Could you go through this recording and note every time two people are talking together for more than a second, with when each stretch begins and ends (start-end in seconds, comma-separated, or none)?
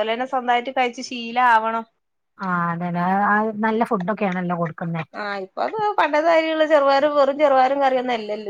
none